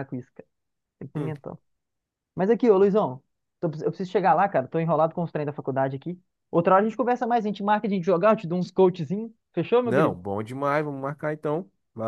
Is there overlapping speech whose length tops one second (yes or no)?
no